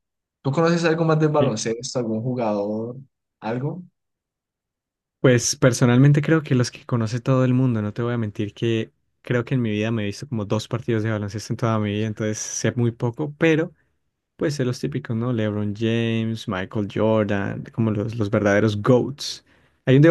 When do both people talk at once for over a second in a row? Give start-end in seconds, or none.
none